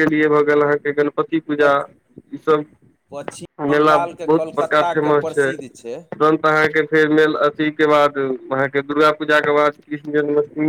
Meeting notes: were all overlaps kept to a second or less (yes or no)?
no